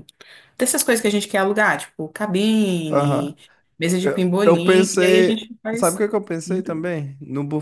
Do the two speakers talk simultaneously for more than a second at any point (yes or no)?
yes